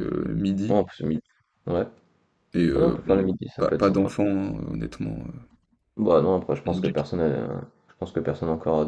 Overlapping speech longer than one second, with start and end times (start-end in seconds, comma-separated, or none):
2.8-4.1